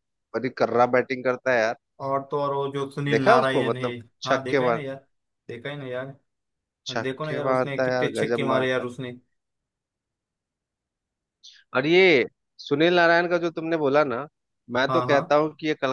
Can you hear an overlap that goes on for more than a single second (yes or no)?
yes